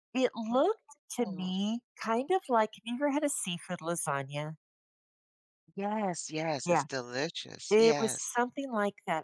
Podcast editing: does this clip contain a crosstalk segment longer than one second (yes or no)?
no